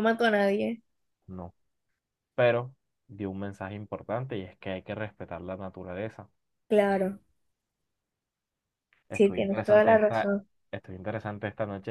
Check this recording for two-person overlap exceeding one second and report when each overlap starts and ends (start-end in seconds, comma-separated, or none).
9.1-10.3